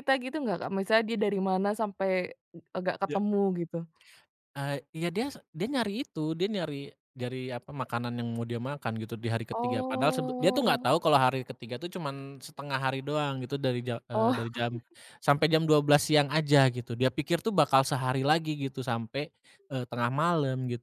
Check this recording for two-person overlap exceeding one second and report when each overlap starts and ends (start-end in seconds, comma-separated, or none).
9.5-10.9